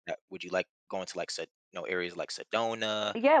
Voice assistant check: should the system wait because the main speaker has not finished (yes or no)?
no